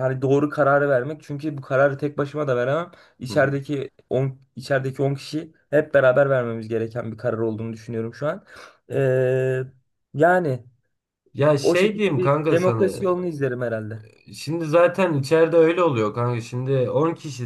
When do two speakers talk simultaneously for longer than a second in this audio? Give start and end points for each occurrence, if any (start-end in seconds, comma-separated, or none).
11.6-13.0